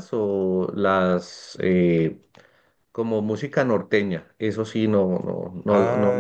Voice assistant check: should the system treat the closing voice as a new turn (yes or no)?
no